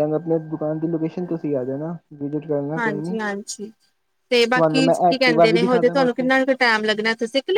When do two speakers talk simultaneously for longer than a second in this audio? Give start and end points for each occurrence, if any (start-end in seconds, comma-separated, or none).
4.5-6.3